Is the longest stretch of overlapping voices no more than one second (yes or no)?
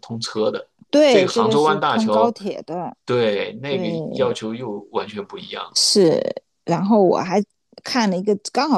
no